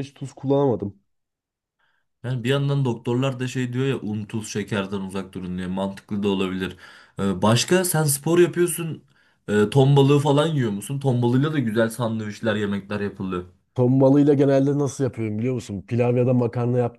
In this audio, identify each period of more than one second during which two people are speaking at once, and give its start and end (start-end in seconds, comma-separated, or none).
none